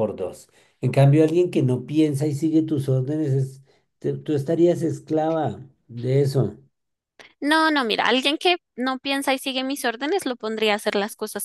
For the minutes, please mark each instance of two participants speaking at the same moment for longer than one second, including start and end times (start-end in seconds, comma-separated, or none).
none